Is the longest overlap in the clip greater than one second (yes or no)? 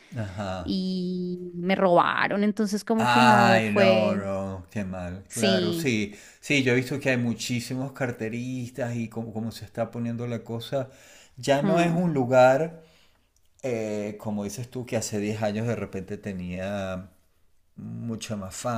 yes